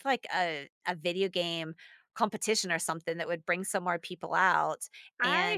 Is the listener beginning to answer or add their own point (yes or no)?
yes